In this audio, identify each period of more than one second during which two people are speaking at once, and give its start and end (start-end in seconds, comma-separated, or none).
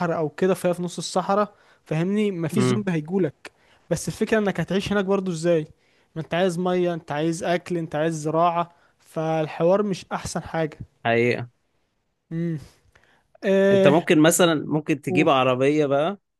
none